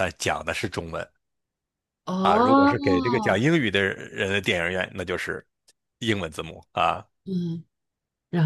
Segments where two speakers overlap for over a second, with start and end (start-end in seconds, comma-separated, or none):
2.2-3.4